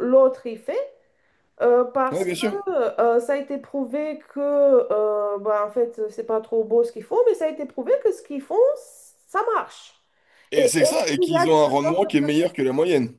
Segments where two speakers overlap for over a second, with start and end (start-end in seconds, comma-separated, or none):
10.5-12.3